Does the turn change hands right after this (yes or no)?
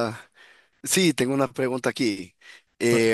no